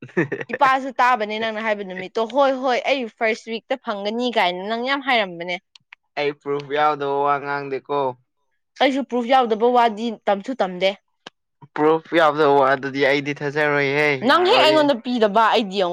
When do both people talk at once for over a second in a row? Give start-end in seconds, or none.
none